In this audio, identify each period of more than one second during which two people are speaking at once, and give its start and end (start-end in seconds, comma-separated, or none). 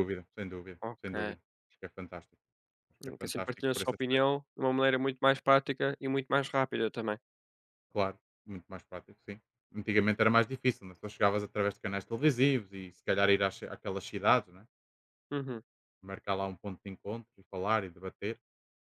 3.0-4.2